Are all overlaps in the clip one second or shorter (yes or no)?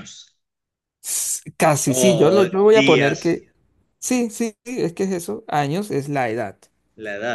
no